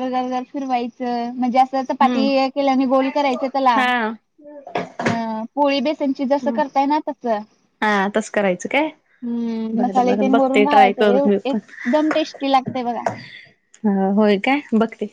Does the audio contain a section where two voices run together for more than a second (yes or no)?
yes